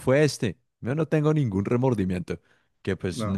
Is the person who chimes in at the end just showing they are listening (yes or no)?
yes